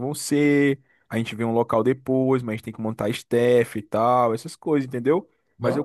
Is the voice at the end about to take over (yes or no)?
no